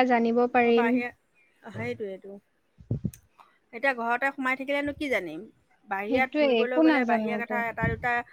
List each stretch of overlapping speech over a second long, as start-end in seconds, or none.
6.1-7.5